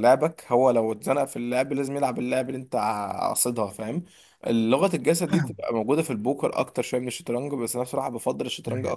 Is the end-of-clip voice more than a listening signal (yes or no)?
no